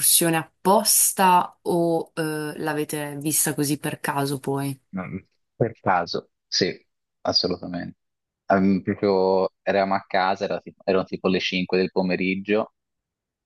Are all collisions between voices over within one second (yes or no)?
yes